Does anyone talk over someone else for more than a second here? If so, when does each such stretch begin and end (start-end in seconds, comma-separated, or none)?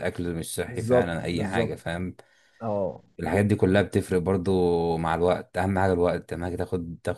0.7-2.0